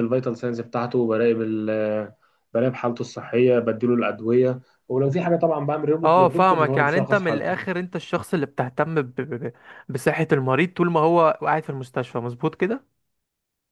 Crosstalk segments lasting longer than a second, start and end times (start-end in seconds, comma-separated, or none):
6.0-7.7